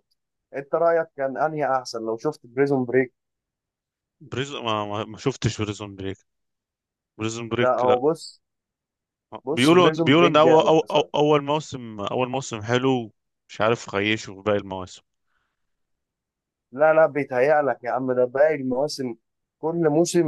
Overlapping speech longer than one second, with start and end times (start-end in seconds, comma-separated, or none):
9.5-11.1